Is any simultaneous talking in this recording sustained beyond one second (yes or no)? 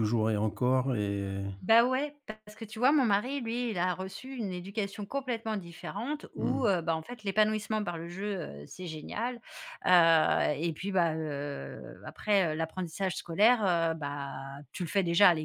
no